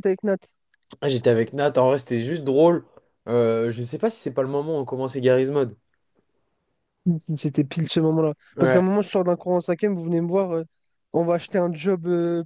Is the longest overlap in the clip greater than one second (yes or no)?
no